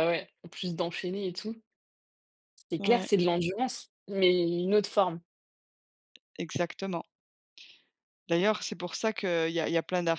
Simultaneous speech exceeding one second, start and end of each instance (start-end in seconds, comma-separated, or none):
none